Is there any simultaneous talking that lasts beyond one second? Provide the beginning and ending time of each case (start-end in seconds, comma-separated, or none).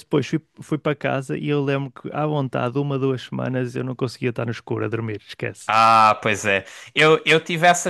none